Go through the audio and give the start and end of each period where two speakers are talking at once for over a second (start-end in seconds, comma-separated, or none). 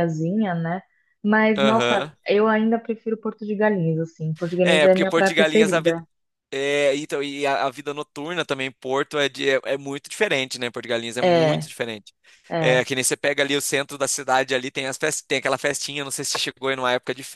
4.6-5.9